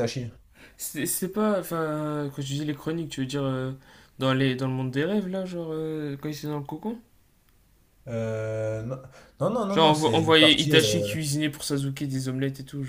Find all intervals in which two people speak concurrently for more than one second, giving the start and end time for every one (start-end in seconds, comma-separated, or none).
9.7-11.2